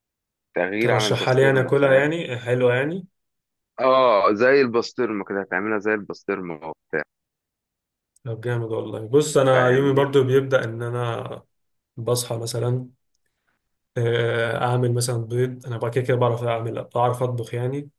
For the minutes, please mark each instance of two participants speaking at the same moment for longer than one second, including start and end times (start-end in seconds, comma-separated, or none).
0.8-2.1